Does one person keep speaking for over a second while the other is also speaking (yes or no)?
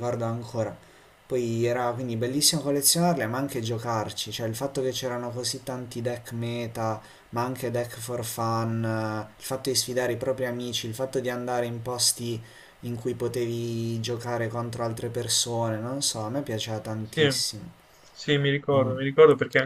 no